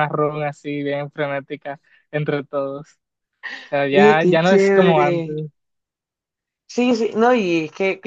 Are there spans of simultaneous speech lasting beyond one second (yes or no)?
yes